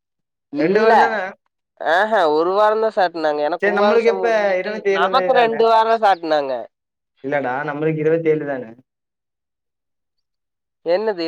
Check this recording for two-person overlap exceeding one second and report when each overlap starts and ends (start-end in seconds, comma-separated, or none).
3.6-5.6